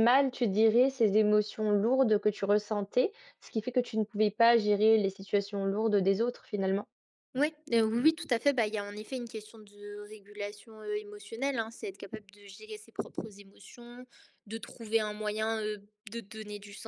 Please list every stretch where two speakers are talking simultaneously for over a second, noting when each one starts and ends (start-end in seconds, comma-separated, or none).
none